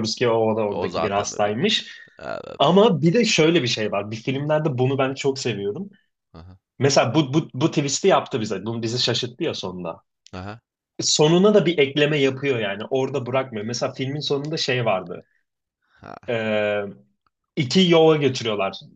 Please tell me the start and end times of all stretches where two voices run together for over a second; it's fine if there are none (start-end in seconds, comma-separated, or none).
0.7-1.9